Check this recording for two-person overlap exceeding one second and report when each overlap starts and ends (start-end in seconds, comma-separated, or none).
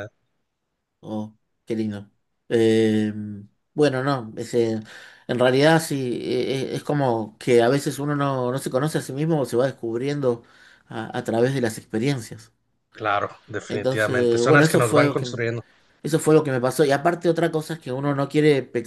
13.7-15.4